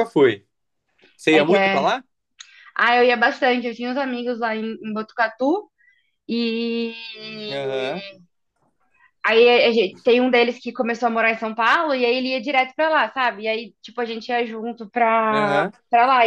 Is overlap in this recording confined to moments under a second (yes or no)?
yes